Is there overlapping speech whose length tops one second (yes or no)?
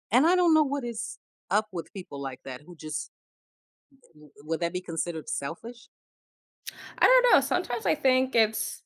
no